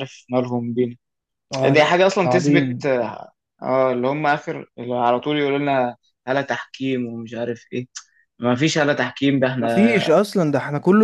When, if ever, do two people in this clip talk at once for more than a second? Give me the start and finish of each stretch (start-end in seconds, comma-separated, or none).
1.6-2.9